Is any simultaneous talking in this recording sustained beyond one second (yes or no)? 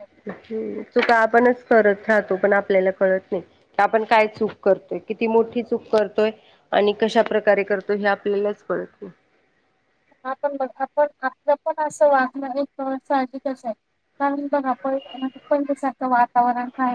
no